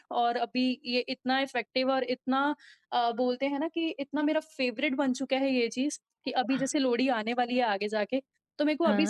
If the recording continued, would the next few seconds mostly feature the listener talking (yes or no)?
no